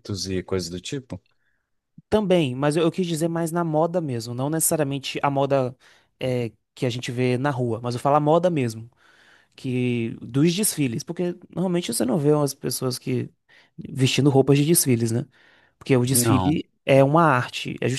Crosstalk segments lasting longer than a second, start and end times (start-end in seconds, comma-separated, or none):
none